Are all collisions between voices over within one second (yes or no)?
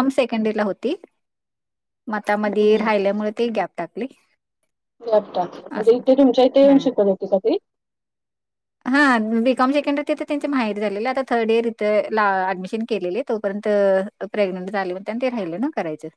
yes